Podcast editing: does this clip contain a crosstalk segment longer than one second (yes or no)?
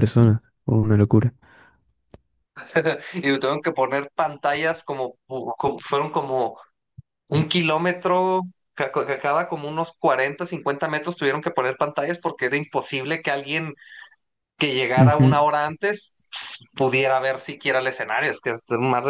no